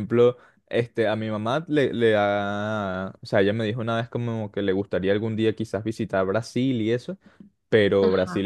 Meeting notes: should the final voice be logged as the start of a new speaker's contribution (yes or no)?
no